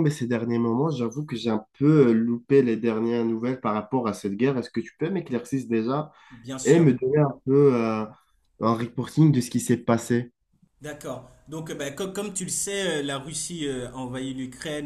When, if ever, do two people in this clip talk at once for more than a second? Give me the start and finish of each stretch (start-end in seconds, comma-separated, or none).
none